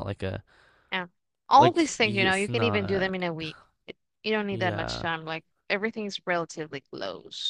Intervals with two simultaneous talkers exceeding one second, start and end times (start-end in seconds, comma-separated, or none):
1.5-3.1